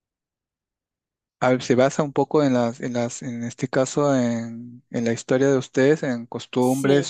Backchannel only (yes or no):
yes